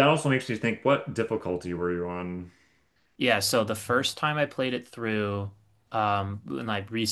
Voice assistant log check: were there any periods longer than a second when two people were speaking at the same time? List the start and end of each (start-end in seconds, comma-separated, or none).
none